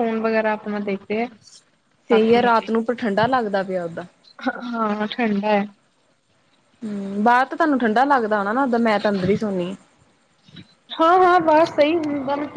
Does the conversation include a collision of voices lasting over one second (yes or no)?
no